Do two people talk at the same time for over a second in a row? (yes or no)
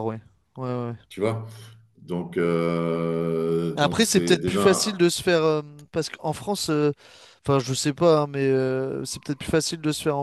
yes